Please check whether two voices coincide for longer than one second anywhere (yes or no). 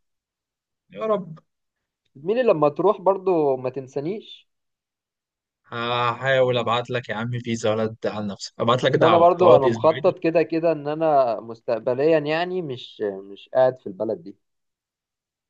yes